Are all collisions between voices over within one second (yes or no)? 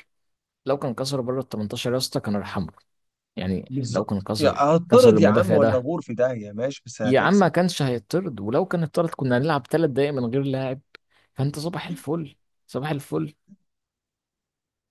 no